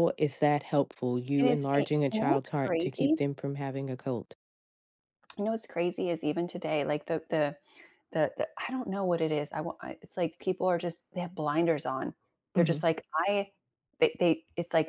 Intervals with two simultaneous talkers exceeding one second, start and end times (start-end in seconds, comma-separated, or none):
1.4-3.1